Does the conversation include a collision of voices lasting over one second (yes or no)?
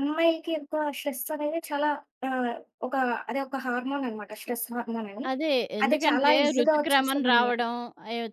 yes